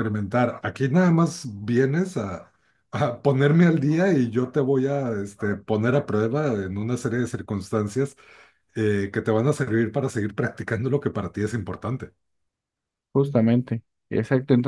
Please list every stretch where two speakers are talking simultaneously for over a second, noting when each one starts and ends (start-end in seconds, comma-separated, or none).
none